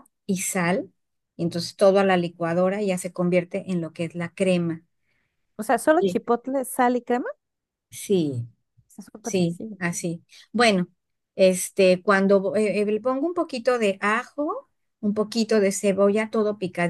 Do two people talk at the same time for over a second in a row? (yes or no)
no